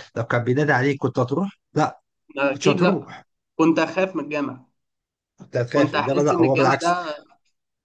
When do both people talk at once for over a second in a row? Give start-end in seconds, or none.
5.7-7.0